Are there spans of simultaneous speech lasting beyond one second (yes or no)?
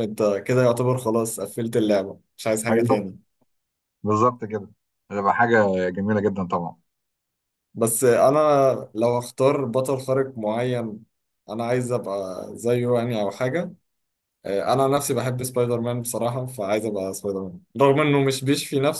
no